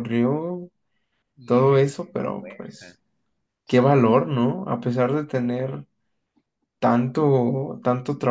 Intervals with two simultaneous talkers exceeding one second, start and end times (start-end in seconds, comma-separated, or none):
1.4-2.9